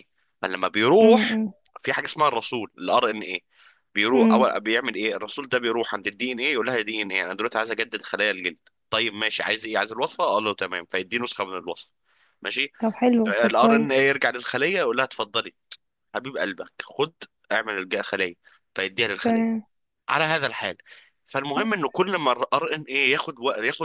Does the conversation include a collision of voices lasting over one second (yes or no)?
no